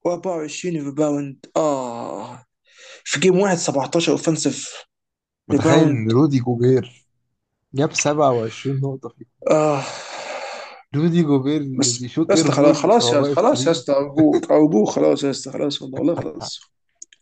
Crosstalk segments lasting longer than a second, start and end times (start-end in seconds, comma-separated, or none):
11.7-13.8